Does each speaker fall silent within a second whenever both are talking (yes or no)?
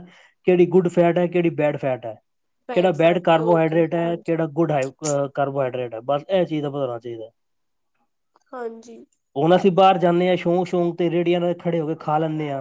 no